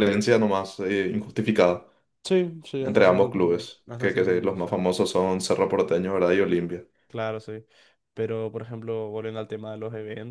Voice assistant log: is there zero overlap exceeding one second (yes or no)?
no